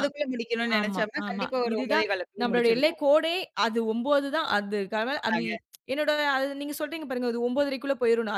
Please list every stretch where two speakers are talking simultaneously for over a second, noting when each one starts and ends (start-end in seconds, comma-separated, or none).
0.8-3.0